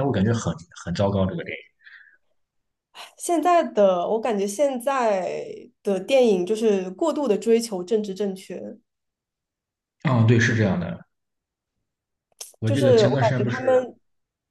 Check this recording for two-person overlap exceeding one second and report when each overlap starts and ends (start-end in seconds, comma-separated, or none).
12.6-13.9